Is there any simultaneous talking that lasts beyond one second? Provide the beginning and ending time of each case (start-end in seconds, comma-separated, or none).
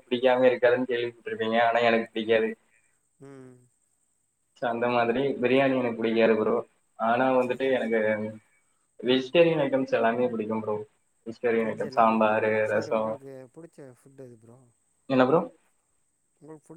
11.6-13.1